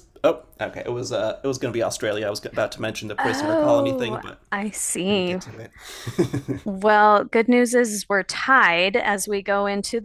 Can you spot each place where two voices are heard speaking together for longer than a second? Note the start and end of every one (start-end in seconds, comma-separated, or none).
3.2-4.4